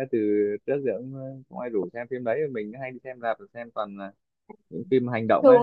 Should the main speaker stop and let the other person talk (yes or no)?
yes